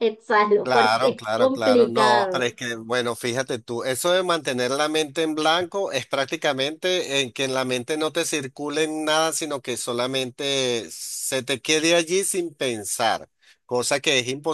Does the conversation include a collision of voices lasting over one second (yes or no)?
yes